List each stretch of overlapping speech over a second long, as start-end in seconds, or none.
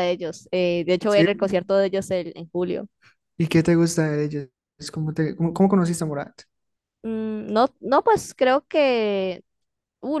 none